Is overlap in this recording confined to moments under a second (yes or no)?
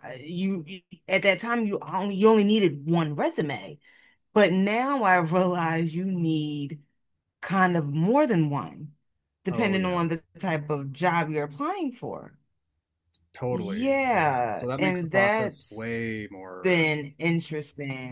no